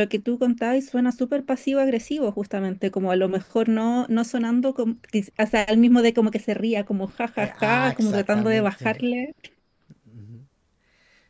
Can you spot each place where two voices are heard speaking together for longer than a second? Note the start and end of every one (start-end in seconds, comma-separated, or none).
7.3-8.9